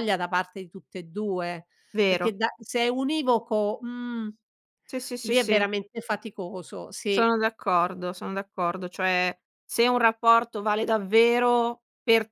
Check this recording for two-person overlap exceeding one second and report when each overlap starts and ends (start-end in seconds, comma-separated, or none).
none